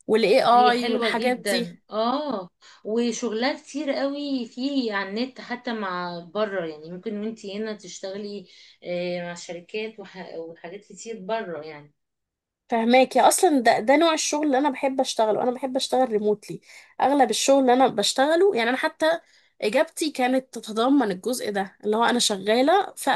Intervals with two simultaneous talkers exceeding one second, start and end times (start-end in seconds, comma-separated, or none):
0.5-1.8